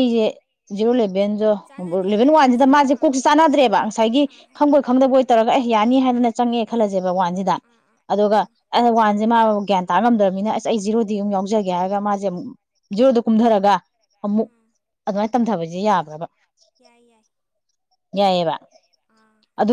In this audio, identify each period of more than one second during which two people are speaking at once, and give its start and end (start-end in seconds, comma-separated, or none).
1.7-3.2